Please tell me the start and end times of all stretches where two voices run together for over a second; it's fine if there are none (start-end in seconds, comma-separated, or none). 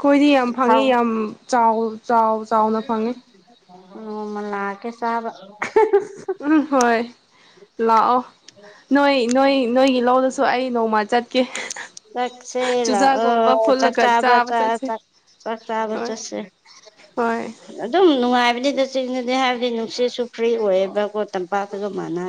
12.8-14.9